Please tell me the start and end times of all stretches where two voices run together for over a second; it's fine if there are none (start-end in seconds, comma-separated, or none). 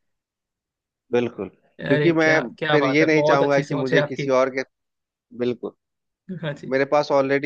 1.9-4.3